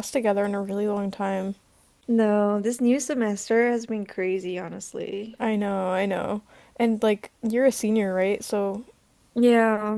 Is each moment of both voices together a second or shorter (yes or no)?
yes